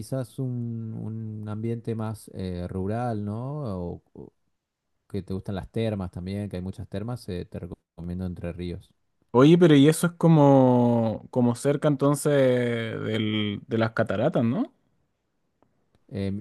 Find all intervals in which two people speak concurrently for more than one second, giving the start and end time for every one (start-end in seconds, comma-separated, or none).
none